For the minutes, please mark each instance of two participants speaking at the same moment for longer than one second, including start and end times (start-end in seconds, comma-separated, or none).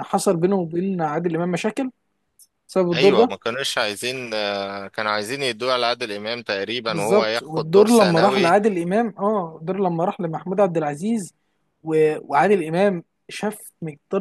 6.9-8.6